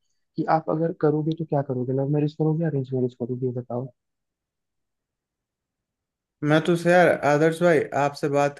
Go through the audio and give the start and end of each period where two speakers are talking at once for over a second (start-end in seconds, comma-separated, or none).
none